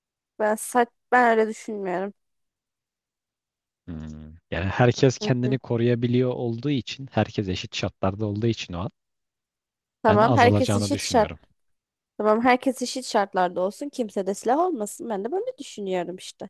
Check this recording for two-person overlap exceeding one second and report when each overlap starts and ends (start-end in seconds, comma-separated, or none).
10.1-11.3